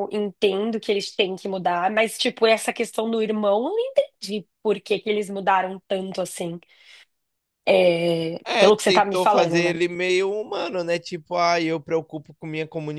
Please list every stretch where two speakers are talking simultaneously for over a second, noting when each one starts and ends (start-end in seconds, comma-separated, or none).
8.4-9.8